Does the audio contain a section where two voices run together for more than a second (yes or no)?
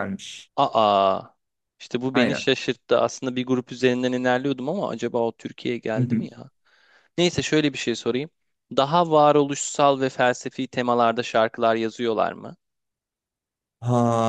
no